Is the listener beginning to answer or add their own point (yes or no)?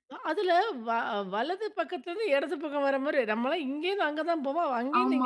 yes